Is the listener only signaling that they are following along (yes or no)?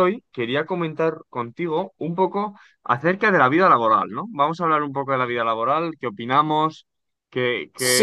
no